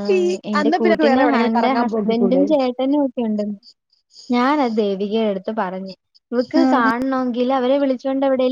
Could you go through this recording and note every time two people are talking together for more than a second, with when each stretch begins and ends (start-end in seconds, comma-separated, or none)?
0.6-2.4